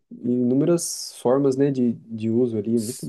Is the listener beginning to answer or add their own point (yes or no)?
yes